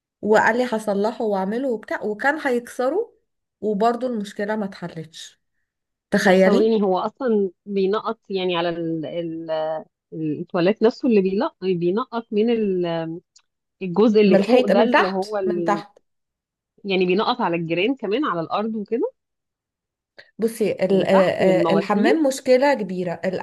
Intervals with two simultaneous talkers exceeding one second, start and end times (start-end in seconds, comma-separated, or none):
14.3-15.8, 20.9-22.3